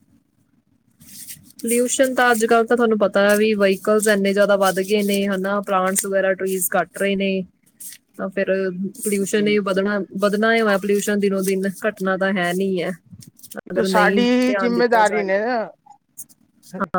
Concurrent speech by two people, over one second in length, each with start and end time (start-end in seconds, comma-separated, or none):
13.8-15.4